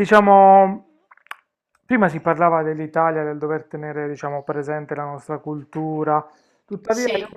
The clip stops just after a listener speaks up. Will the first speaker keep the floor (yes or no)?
yes